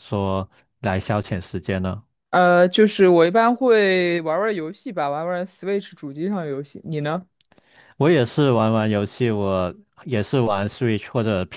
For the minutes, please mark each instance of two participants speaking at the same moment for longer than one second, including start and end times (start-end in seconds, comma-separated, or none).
none